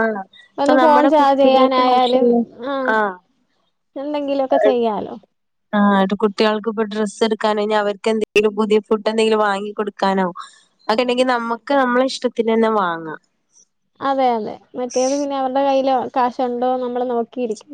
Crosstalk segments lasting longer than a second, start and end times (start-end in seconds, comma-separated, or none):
0.6-2.3